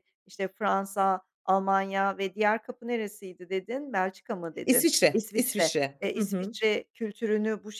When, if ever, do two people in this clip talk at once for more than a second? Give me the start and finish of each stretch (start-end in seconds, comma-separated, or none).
4.7-6.5